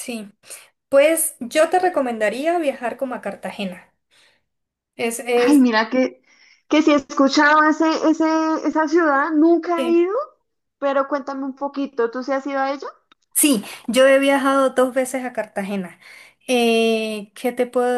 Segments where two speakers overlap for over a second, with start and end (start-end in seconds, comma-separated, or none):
none